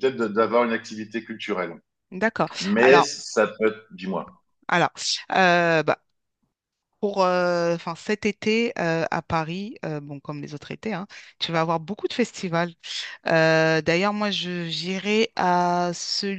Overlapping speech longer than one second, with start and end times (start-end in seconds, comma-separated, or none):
none